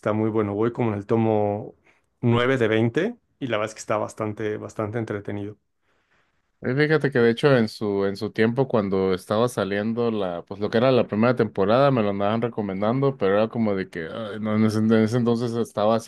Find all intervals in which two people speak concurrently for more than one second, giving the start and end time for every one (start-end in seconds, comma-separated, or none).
none